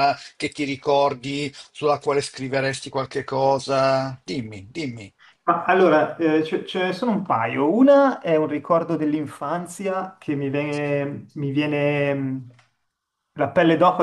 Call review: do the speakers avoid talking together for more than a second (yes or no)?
yes